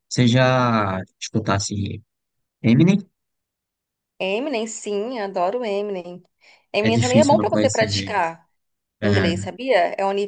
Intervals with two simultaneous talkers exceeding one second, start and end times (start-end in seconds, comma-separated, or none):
6.8-8.2